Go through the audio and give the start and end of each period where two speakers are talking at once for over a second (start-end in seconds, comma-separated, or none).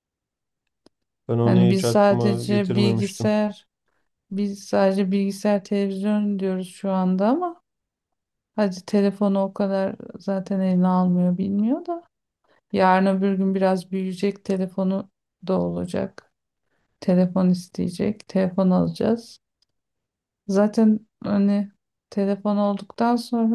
1.4-3.4